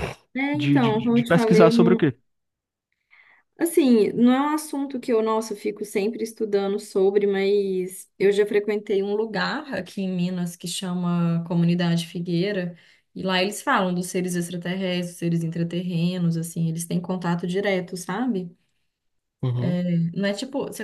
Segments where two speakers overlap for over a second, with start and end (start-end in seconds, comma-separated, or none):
0.5-2.1